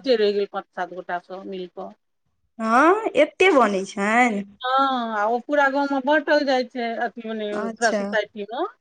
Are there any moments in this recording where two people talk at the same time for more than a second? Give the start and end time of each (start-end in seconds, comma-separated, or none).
none